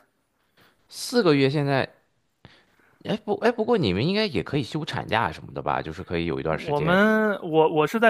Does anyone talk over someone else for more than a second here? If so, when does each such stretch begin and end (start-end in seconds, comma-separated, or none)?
none